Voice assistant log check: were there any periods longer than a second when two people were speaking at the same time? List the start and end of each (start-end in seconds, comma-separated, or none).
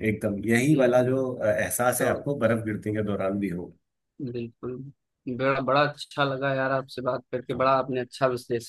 none